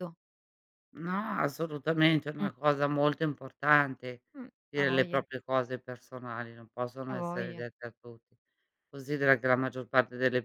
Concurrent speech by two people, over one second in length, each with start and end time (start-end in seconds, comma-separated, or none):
none